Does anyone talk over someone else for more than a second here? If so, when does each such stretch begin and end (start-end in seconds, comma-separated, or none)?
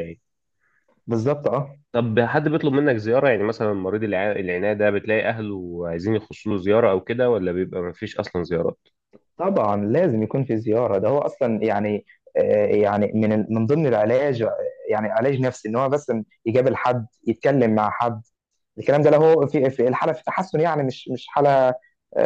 none